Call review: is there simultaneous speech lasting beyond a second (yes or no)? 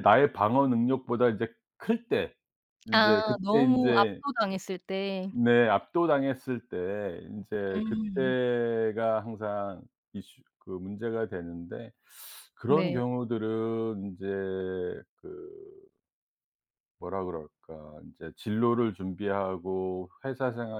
yes